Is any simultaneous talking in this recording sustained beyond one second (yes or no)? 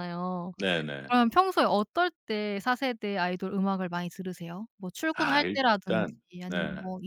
yes